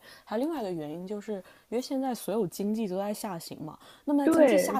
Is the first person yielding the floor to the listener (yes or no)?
no